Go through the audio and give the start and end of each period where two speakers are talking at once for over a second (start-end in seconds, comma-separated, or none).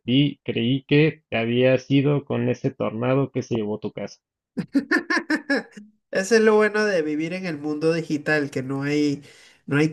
none